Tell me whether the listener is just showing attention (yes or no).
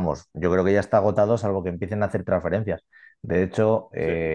yes